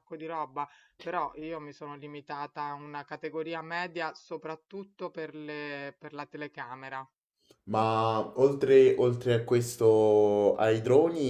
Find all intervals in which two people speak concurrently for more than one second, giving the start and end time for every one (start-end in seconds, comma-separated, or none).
none